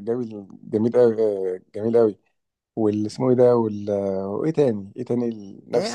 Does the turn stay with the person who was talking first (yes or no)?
no